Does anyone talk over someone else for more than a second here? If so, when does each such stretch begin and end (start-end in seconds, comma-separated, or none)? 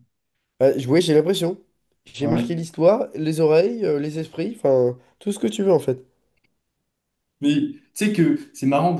none